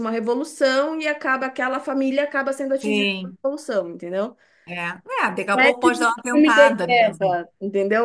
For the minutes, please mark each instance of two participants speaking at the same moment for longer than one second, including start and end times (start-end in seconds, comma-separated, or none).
5.5-7.4